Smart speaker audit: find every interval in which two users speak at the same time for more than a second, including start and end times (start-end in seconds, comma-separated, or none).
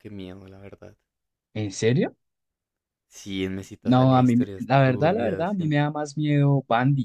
3.9-5.7